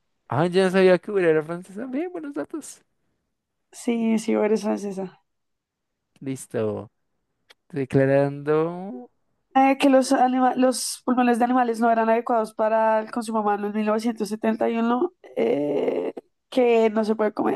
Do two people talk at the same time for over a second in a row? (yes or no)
no